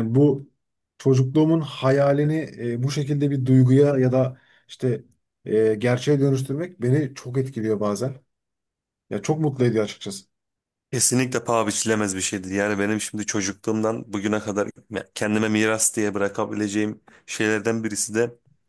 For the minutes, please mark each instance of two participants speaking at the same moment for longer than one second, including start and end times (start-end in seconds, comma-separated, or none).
none